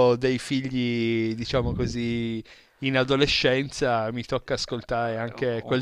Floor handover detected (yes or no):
yes